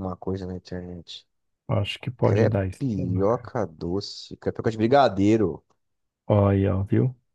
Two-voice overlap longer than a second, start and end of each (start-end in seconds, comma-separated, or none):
2.2-3.5